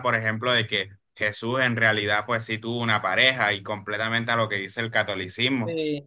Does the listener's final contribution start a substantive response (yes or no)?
no